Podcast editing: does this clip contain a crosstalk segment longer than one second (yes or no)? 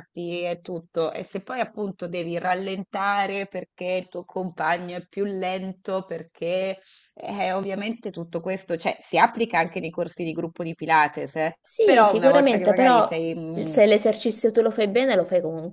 yes